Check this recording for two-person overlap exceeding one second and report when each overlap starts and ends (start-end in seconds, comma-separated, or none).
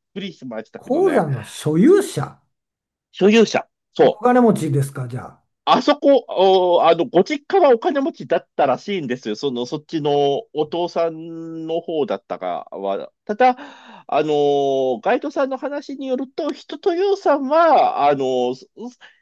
none